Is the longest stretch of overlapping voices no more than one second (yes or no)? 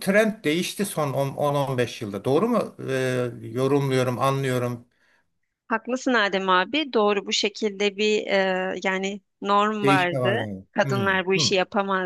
no